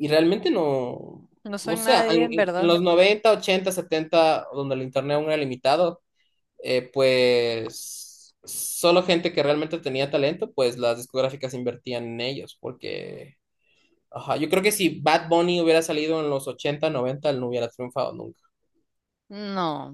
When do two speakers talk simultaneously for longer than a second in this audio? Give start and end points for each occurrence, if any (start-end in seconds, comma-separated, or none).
1.4-2.8